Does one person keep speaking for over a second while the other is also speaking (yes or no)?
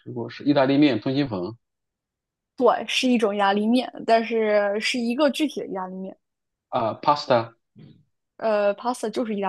no